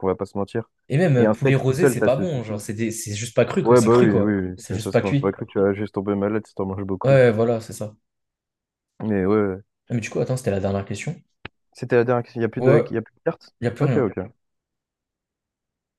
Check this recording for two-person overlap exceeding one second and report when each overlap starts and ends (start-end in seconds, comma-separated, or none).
1.2-2.6, 3.6-5.3